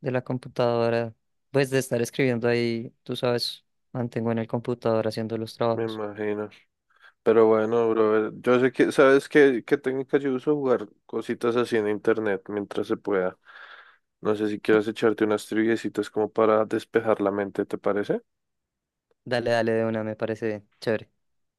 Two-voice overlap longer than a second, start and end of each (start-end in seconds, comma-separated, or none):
none